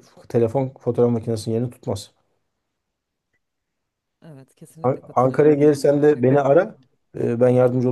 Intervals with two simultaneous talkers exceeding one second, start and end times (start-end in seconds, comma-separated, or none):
4.8-6.8